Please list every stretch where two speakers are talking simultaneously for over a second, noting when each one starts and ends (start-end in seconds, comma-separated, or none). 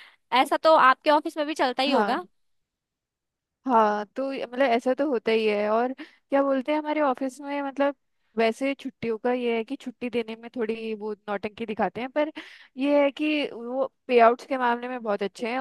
none